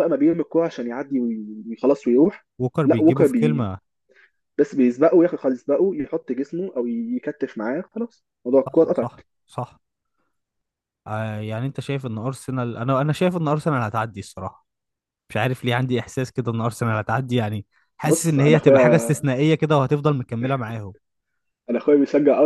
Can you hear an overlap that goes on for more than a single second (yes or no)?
yes